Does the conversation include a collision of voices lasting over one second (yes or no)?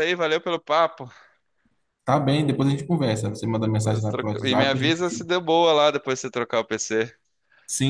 yes